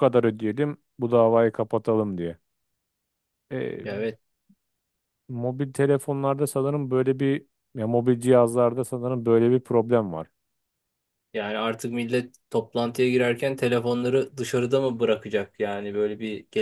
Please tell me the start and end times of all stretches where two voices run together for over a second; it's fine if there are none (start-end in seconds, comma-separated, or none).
none